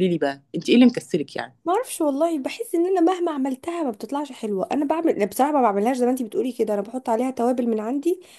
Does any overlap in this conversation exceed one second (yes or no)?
no